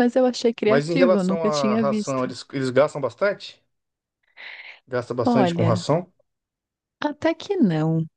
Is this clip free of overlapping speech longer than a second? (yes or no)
no